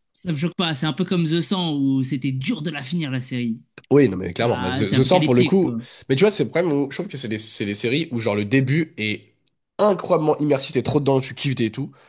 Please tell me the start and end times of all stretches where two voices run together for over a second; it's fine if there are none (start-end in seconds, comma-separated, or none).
4.4-5.8